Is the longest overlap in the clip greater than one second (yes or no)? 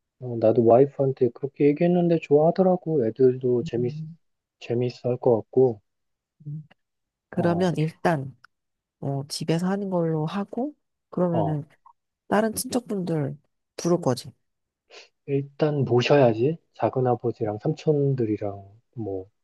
no